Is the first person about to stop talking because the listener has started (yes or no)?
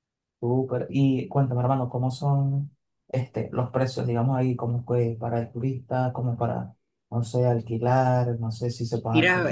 yes